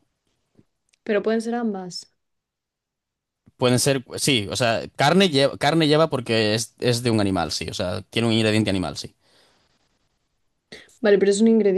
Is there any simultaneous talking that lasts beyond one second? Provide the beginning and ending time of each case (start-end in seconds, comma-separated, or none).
none